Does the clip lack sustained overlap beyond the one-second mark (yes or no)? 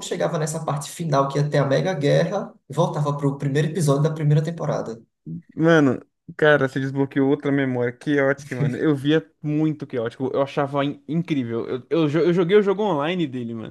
yes